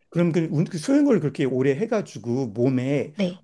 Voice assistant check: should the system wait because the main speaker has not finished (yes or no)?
yes